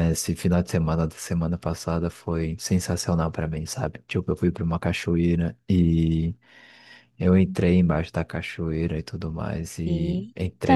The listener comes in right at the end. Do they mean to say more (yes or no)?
no